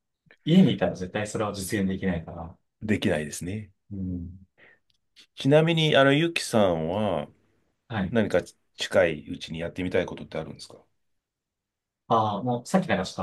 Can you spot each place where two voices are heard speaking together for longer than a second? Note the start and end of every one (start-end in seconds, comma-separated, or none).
none